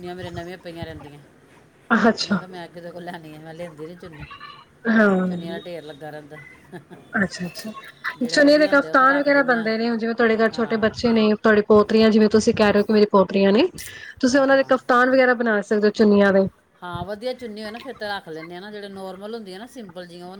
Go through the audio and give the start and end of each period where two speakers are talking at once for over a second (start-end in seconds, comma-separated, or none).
8.3-9.7